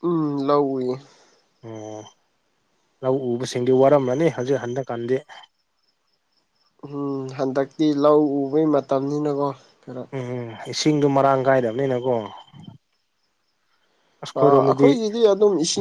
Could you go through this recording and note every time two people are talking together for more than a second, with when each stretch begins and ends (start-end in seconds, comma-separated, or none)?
none